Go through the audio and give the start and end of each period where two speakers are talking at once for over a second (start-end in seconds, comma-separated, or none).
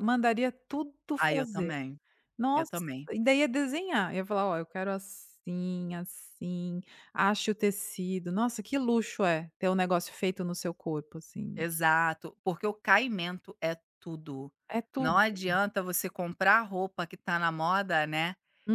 none